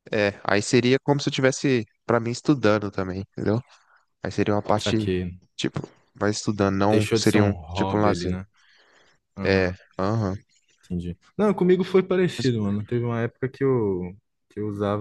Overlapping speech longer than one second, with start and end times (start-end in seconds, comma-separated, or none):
6.9-8.4